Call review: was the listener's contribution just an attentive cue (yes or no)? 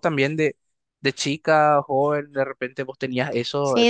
no